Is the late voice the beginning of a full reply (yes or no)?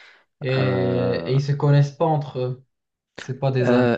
yes